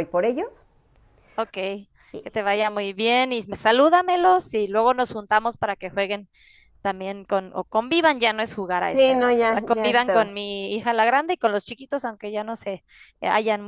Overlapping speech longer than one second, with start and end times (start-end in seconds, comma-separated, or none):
8.9-10.3